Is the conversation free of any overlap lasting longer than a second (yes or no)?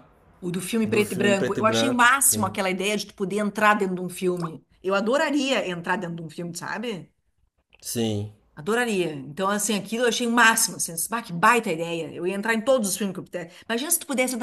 no